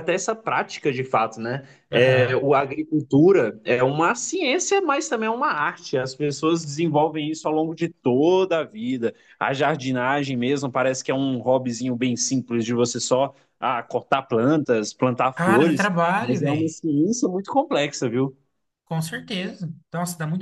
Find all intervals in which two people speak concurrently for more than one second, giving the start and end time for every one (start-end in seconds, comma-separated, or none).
15.3-16.7